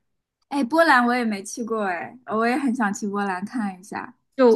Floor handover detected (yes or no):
yes